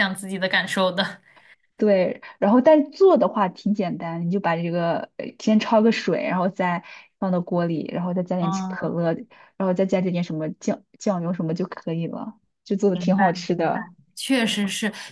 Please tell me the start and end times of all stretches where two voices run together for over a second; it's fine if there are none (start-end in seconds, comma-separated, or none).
none